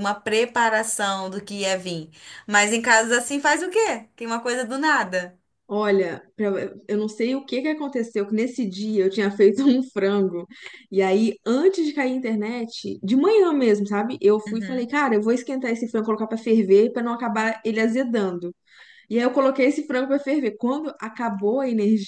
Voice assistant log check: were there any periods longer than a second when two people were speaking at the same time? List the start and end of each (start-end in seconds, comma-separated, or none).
none